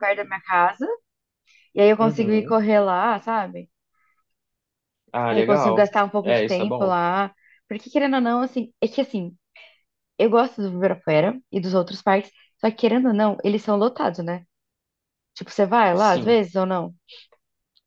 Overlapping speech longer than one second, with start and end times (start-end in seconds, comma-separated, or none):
5.3-7.0